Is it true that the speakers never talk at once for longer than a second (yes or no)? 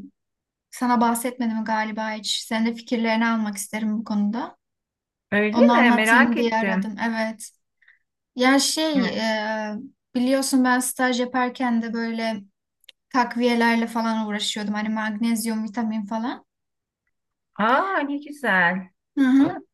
no